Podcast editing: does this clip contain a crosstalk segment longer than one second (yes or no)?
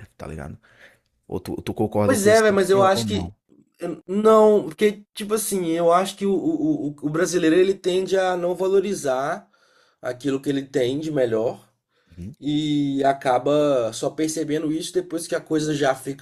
yes